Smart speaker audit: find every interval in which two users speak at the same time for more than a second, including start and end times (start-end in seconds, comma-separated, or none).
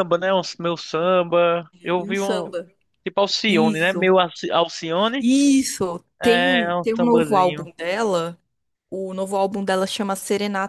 6.2-7.7